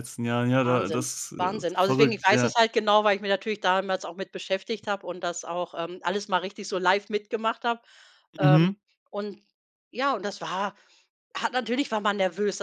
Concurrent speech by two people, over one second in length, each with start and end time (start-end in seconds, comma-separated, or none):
0.6-2.5